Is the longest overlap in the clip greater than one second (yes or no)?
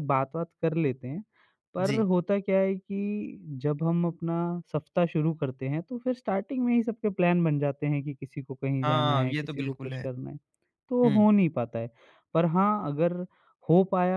yes